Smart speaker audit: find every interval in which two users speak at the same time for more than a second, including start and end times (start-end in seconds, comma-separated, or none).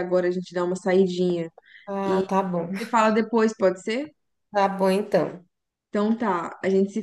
none